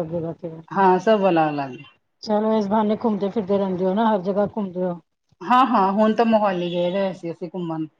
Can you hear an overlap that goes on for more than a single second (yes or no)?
no